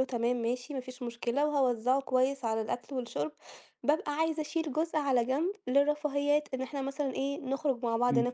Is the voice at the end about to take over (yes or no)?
no